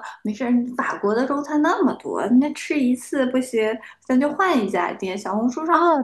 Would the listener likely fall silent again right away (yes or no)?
yes